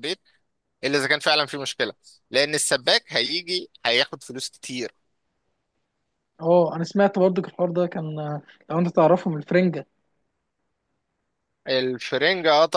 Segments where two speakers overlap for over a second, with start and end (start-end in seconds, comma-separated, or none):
none